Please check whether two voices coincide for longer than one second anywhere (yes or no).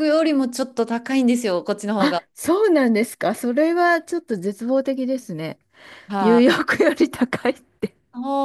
no